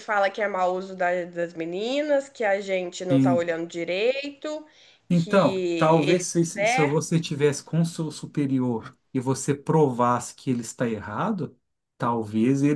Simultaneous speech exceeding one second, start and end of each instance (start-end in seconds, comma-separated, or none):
5.1-7.2